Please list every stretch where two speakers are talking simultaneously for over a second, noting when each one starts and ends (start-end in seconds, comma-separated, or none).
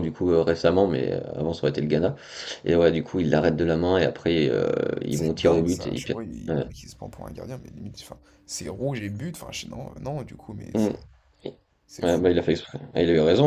5.1-6.6